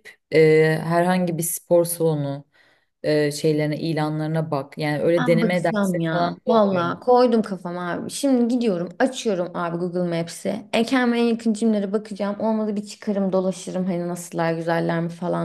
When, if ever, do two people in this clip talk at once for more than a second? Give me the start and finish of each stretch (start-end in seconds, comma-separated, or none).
5.2-7.0